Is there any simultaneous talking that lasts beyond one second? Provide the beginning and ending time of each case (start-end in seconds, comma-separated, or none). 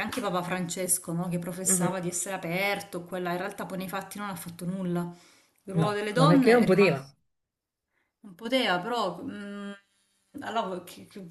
5.7-7.1